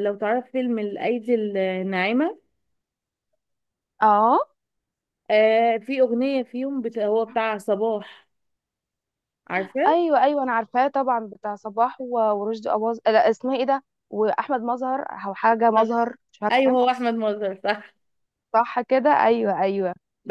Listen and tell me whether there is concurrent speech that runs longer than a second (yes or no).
no